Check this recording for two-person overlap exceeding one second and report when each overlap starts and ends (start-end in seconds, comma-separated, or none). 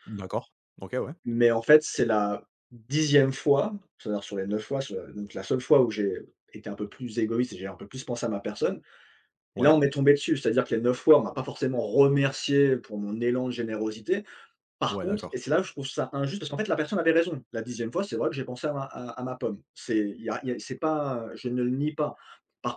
none